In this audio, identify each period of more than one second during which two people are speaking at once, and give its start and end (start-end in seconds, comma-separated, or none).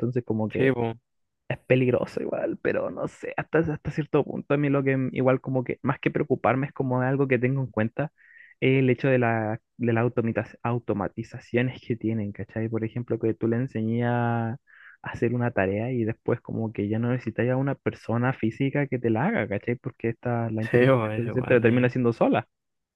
20.6-22.0